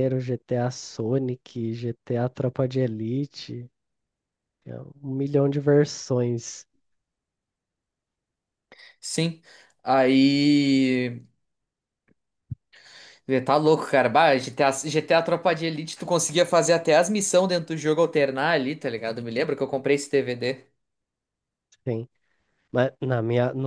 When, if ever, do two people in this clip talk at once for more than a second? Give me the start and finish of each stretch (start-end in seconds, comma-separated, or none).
none